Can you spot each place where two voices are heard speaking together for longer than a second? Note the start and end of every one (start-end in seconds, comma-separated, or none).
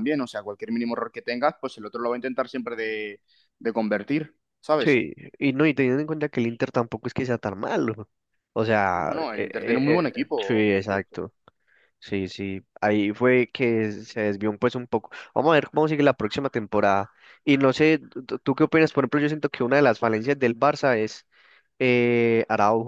8.9-11.2